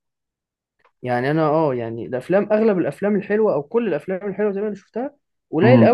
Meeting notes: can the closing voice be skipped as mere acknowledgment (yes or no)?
yes